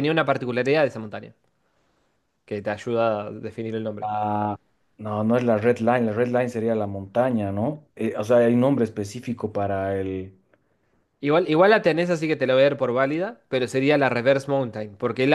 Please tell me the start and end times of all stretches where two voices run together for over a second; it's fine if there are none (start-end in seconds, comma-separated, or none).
none